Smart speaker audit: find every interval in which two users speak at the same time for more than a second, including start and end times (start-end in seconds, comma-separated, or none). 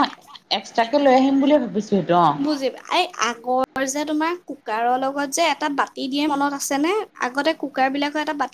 none